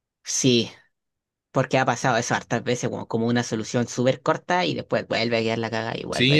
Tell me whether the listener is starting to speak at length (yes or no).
yes